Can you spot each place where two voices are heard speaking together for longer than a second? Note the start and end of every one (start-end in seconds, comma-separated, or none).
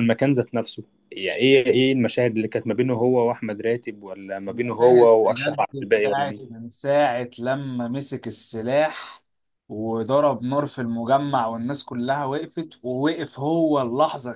4.5-6.6